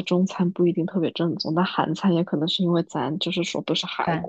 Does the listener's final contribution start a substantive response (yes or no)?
yes